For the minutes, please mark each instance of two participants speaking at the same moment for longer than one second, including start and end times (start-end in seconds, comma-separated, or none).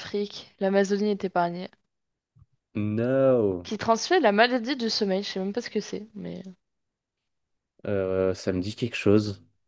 none